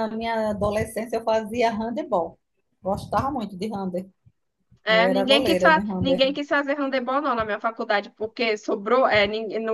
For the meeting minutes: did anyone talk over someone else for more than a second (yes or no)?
yes